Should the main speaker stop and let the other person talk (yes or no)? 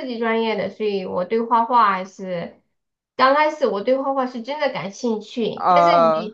no